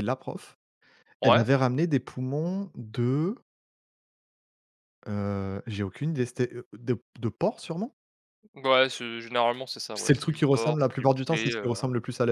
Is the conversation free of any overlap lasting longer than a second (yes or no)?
no